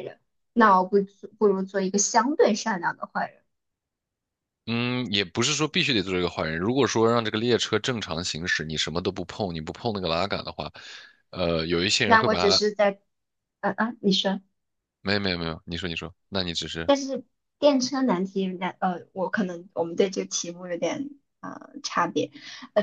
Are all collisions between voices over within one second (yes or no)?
yes